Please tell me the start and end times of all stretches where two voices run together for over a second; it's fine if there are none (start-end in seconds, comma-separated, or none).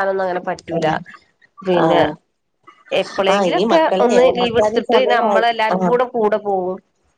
3.3-5.9